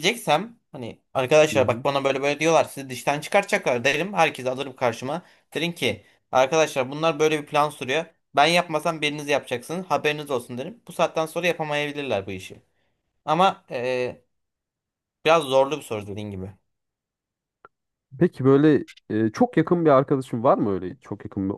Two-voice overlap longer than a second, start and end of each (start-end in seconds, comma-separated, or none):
none